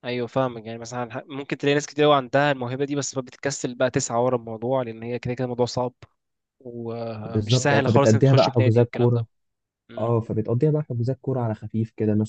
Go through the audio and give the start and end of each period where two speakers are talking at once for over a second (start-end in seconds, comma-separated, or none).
7.2-9.2